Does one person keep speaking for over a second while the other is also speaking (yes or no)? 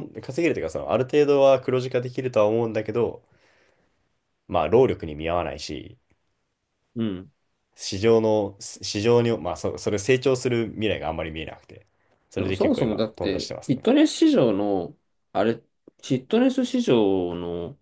yes